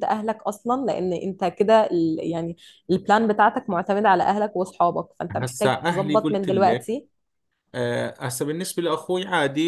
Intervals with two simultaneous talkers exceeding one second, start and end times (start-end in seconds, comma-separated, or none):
5.4-7.0